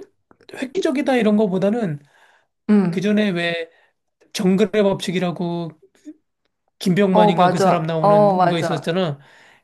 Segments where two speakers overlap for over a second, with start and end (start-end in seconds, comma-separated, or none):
7.1-8.9